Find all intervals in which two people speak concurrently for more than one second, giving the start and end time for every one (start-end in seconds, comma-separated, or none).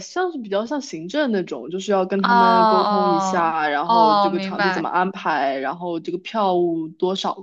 2.2-4.9